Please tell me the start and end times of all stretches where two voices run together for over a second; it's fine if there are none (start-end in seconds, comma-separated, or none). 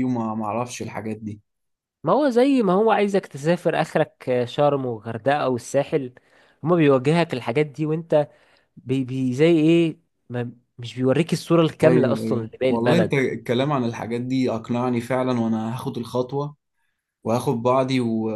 11.8-13.2